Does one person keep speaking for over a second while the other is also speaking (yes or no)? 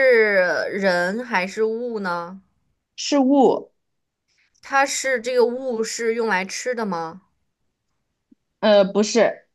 no